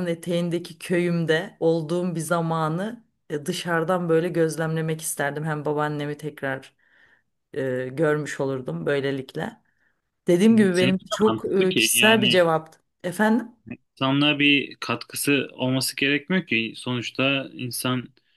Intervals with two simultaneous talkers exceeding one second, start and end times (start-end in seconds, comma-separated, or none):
10.5-12.4